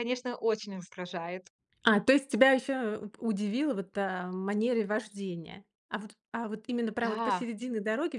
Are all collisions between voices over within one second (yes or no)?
yes